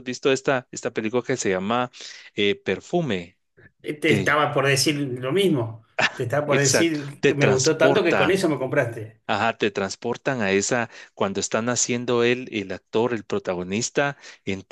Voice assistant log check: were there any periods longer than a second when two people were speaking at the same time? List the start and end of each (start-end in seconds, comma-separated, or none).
6.5-8.4